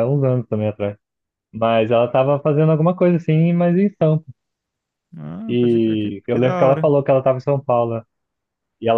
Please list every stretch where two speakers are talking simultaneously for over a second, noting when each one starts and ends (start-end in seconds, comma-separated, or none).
5.5-6.9